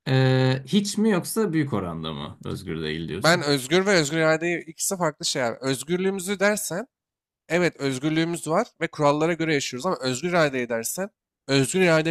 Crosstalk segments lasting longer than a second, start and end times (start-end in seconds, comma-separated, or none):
none